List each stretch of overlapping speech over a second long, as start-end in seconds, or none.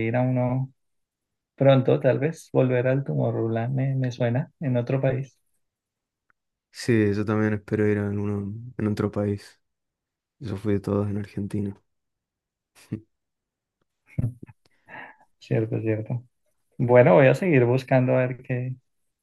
none